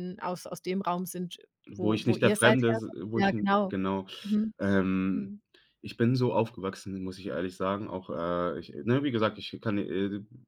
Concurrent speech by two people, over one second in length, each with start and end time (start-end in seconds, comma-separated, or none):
1.7-3.7